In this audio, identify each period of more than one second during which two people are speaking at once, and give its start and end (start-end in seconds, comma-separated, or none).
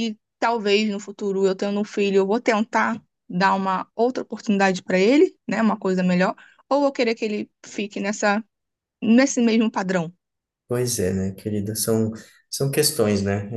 none